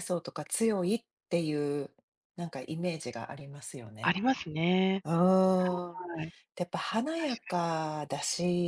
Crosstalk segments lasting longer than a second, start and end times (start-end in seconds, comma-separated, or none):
none